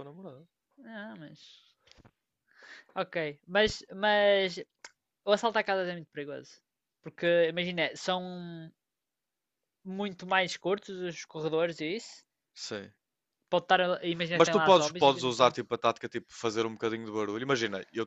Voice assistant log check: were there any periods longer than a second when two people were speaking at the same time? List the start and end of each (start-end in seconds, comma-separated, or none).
14.3-15.5